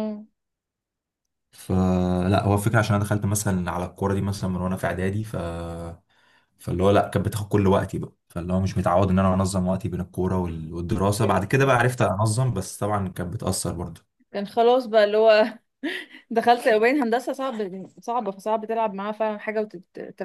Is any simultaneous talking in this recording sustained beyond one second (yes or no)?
no